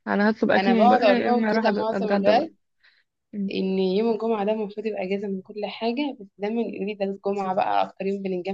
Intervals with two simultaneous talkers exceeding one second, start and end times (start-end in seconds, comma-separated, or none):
0.6-2.5